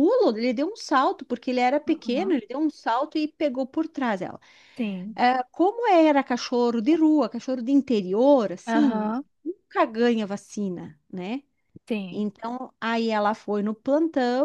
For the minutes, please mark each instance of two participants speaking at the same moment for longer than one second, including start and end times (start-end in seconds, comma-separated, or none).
none